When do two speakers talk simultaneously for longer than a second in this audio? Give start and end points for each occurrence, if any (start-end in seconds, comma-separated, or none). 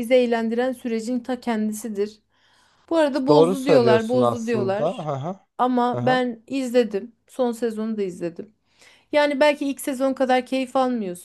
3.3-5.1